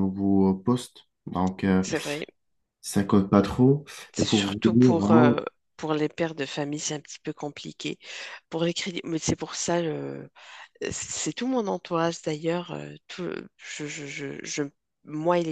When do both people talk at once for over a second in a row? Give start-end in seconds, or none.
4.1-5.4